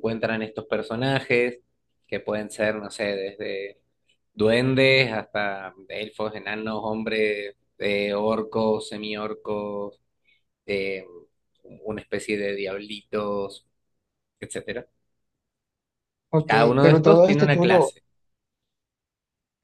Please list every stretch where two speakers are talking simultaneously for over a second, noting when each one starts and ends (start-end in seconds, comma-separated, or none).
16.4-17.9